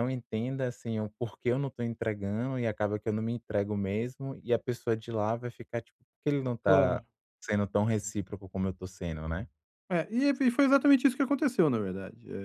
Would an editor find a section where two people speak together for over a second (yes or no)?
no